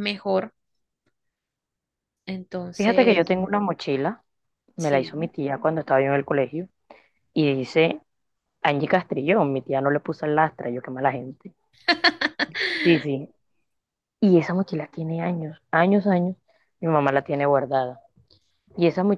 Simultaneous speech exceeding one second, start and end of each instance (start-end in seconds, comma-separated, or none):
none